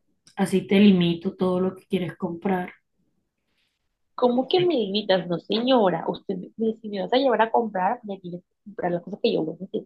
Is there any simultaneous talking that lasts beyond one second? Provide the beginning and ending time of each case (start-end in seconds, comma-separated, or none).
none